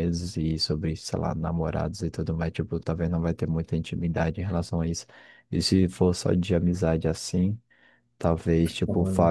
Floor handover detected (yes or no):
no